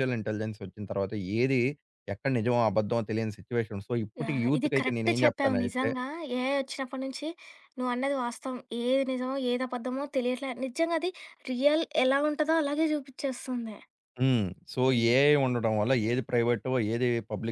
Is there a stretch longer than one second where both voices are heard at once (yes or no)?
yes